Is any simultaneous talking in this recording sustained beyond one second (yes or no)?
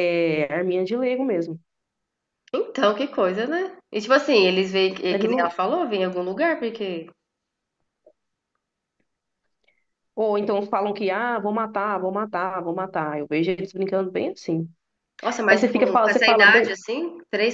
yes